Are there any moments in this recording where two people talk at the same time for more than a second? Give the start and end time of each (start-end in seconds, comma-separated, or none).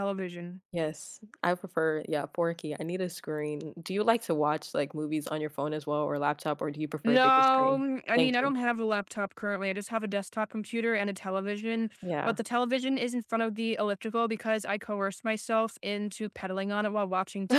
7.0-8.5